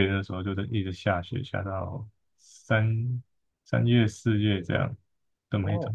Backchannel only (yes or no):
no